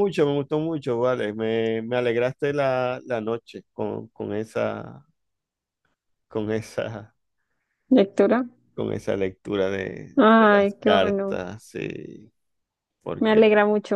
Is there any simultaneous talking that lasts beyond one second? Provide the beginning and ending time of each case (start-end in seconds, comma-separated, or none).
10.2-11.4